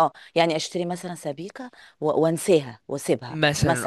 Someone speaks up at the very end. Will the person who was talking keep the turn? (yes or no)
no